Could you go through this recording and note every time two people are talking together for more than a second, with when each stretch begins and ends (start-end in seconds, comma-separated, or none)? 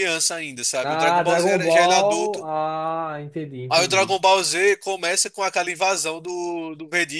0.8-2.5